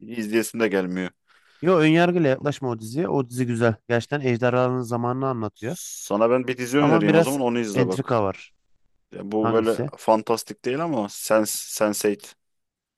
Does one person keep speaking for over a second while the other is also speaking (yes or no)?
yes